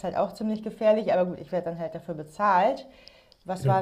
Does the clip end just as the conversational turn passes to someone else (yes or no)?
no